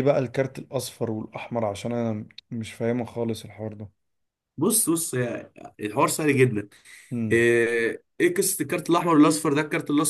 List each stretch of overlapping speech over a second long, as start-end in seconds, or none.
none